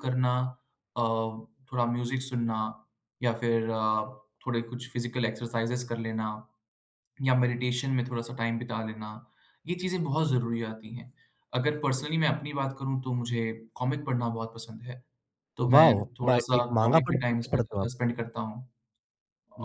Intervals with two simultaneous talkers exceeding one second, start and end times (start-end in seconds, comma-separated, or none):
15.7-17.9